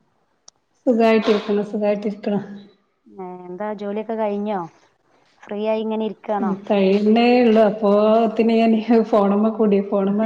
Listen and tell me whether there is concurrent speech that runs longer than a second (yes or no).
no